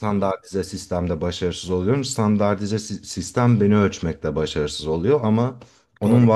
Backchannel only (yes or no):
yes